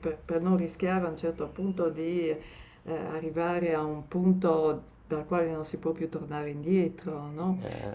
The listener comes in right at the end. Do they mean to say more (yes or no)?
no